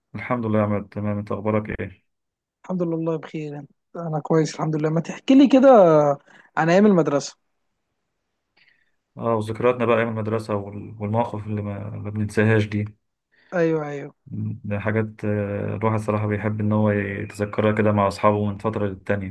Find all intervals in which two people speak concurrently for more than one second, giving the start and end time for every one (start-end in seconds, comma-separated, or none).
none